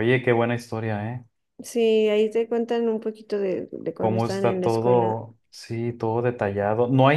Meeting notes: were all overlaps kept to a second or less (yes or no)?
no